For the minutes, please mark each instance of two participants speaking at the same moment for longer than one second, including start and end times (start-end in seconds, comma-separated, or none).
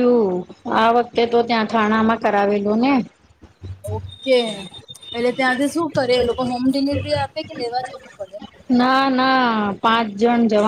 none